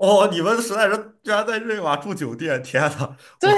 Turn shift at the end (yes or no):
yes